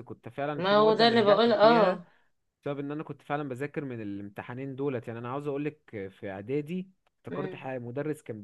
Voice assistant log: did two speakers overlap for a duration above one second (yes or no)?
yes